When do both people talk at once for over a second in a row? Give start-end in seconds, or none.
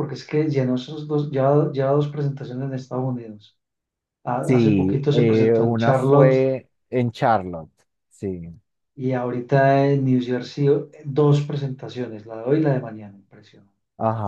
4.4-6.3